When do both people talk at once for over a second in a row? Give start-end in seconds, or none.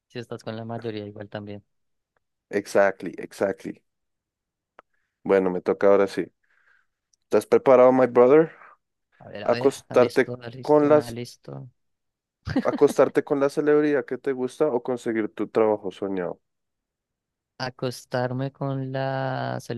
9.4-11.2